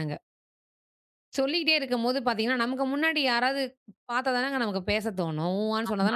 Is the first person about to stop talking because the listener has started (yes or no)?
yes